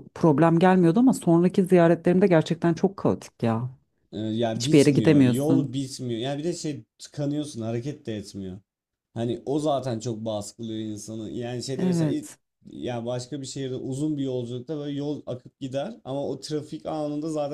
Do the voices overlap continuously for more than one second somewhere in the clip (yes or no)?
yes